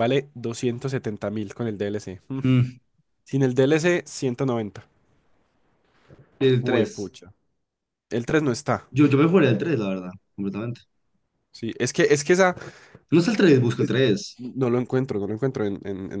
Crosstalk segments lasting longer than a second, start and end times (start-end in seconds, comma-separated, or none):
none